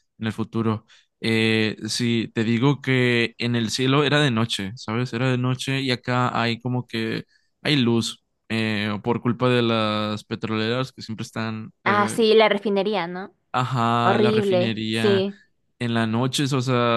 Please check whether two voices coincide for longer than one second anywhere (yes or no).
yes